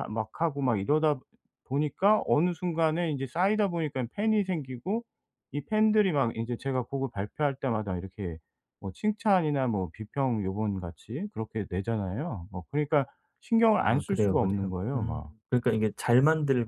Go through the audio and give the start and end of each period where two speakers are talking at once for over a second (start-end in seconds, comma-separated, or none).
13.8-15.3